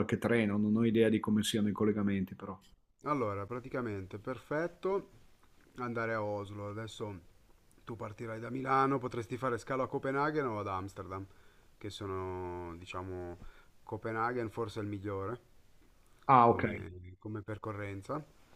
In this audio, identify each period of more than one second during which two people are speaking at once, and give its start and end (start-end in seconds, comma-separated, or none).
none